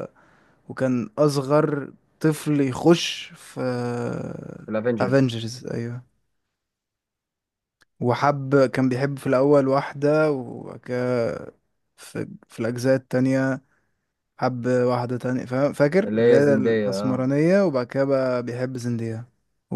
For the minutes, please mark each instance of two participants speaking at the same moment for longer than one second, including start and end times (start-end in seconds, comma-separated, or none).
16.1-17.3